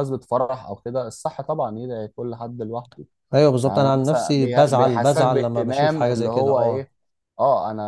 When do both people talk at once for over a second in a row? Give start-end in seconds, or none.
3.6-6.9